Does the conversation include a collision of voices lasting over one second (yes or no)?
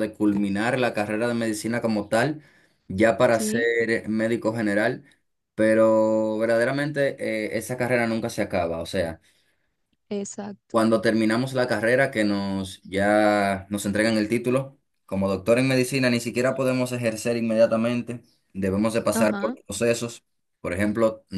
no